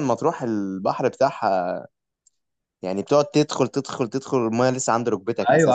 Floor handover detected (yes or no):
yes